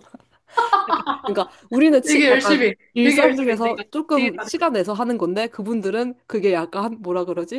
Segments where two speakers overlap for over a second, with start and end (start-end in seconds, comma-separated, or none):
2.1-4.5